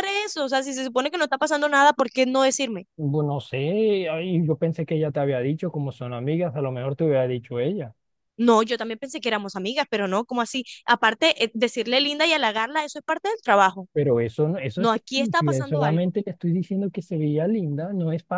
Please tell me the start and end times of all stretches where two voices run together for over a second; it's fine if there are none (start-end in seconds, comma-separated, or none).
14.8-16.1